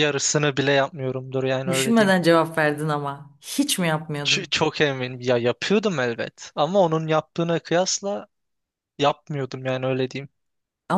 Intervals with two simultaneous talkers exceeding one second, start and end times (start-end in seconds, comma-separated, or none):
none